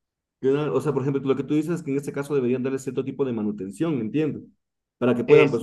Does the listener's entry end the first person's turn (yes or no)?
no